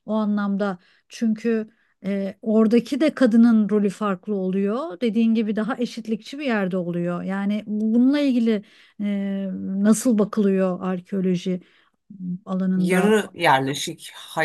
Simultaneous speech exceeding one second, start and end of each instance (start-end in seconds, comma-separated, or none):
none